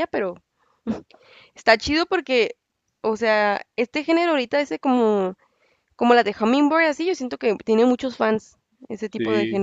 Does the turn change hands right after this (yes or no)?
no